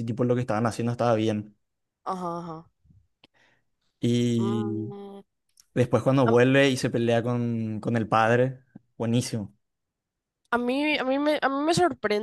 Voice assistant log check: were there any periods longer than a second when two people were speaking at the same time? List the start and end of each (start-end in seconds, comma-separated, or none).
none